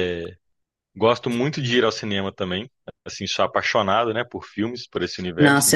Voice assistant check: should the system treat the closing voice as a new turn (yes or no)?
yes